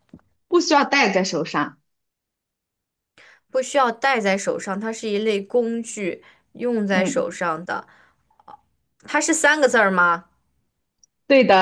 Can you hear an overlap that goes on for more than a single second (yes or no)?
no